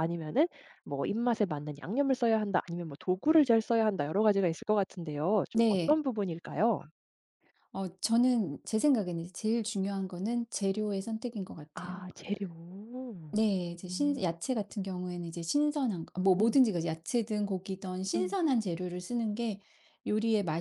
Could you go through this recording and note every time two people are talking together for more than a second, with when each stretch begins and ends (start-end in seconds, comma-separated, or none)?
none